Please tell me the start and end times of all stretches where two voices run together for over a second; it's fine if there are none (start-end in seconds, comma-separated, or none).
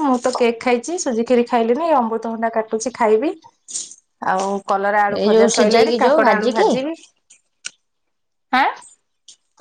5.2-6.7